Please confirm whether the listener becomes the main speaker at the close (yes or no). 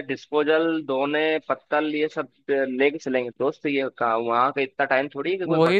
yes